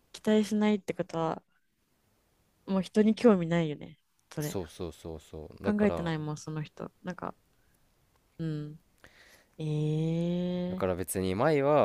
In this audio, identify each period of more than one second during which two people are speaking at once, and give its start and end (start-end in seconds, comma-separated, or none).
none